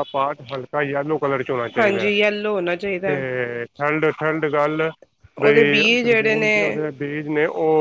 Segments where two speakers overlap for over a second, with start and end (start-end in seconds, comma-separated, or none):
5.4-6.8